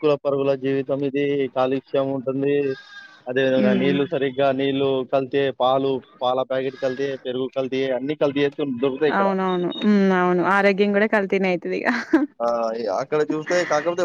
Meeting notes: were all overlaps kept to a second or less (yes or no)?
yes